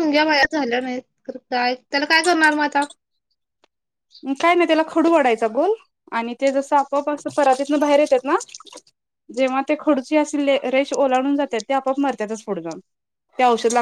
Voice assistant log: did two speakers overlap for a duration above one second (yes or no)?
no